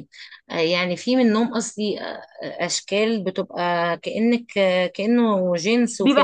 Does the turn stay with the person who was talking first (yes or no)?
no